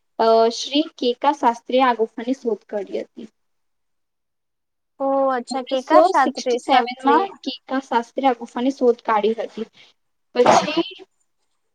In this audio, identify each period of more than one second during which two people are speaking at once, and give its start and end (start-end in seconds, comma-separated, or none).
5.5-7.2